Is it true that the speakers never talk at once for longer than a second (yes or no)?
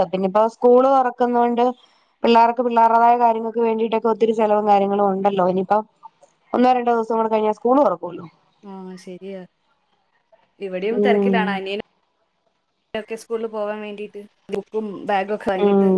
yes